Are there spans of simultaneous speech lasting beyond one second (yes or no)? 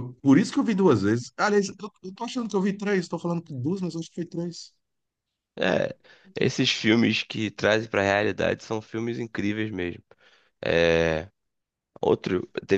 no